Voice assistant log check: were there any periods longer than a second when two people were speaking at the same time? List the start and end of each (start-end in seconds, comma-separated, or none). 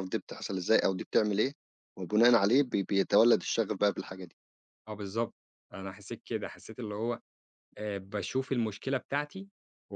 none